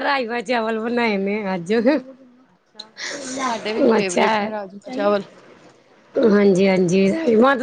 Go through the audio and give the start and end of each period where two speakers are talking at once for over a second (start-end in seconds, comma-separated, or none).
none